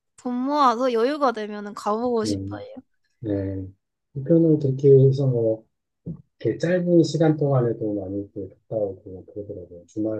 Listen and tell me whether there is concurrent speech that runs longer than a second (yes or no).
no